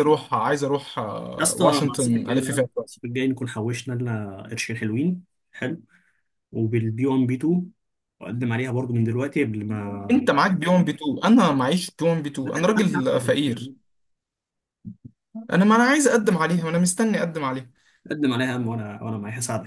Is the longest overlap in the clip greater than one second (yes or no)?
yes